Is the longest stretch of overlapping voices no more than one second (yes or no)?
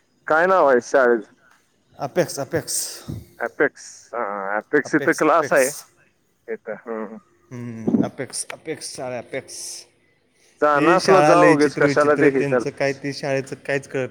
no